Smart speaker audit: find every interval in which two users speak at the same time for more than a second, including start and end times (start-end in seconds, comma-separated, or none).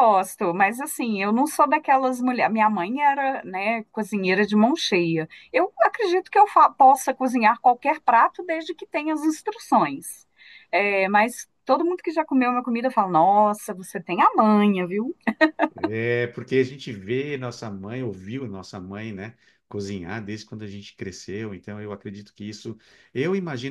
none